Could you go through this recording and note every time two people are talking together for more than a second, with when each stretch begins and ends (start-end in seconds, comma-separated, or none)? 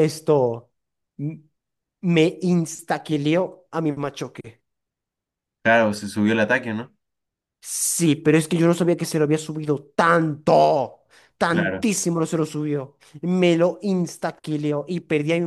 none